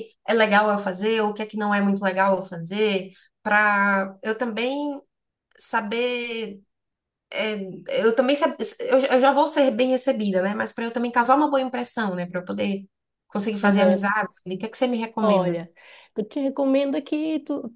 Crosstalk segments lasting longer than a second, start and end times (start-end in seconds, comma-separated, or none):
none